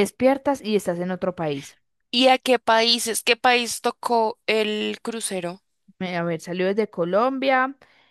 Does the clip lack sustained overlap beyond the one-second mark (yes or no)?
yes